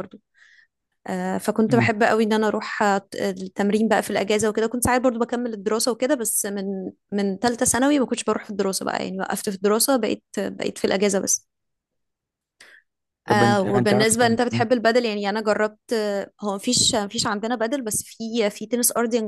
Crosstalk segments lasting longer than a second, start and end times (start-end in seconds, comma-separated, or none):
13.3-14.7